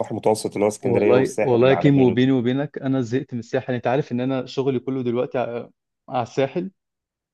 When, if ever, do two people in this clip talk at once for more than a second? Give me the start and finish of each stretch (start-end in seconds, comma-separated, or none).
0.8-2.3